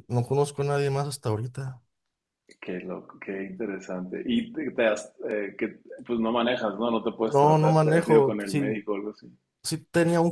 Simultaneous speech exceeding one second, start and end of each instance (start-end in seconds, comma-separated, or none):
7.2-8.8